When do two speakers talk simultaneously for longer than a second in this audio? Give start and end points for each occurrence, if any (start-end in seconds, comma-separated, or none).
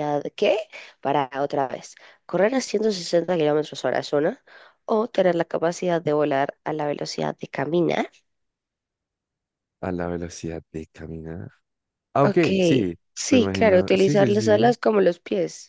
13.1-14.8